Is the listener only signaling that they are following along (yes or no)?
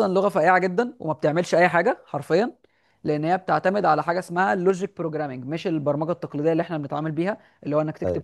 yes